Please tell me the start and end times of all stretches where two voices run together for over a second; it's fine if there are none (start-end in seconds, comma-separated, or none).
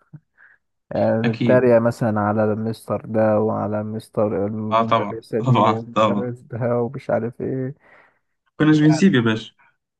4.7-6.3